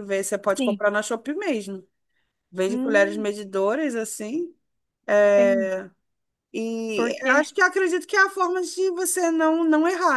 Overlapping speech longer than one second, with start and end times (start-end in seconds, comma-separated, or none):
none